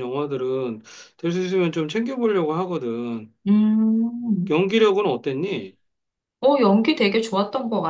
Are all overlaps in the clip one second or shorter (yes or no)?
yes